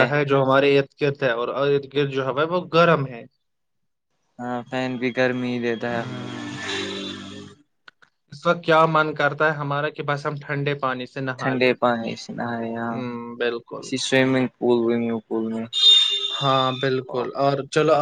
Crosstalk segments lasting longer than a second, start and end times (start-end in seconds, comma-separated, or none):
none